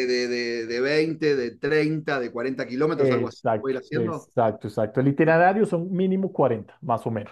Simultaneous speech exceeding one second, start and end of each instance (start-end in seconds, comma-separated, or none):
3.0-4.3